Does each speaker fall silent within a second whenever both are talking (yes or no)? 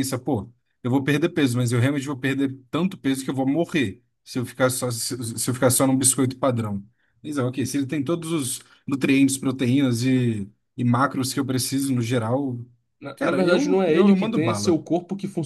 no